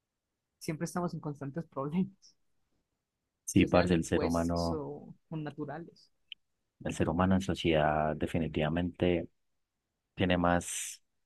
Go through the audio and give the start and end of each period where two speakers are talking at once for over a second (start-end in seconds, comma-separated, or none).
3.5-4.8